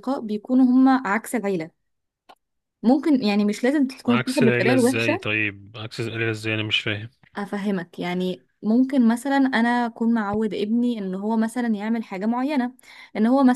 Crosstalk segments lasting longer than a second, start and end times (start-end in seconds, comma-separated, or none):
4.1-5.3